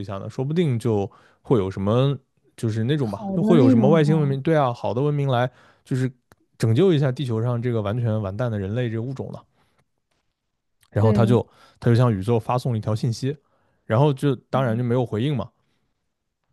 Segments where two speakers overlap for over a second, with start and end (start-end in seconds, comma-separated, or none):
3.0-4.4